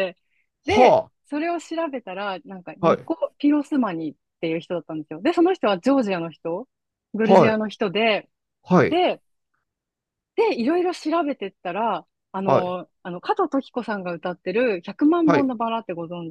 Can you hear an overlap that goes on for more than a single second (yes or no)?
no